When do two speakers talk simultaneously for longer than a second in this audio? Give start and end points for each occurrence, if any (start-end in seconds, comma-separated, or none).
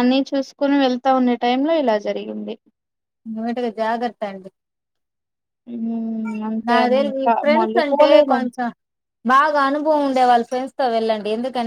6.7-8.5